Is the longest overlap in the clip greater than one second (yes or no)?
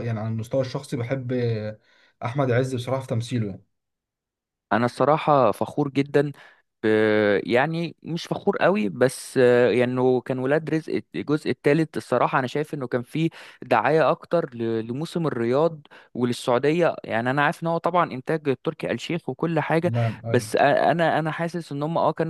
no